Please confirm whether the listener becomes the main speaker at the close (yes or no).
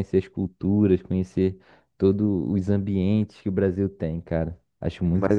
yes